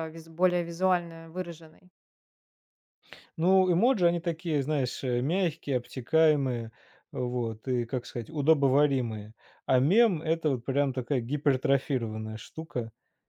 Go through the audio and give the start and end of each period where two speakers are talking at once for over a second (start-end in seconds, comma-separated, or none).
none